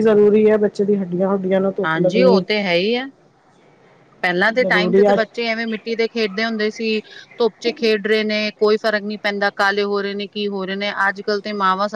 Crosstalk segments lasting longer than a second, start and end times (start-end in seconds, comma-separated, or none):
none